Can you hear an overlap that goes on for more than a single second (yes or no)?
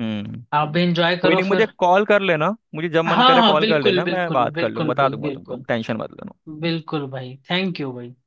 yes